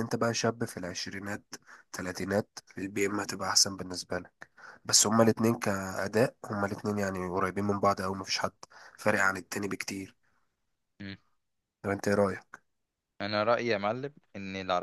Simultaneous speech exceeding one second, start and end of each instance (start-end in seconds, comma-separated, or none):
none